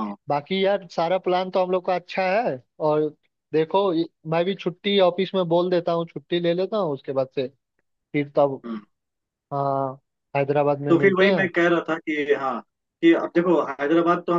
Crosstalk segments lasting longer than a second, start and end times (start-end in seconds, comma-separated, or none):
none